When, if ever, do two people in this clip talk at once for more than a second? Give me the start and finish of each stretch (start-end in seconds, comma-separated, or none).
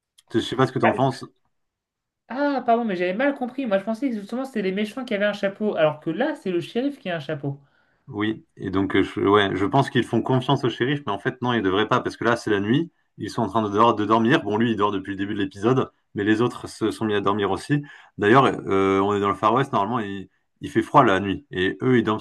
none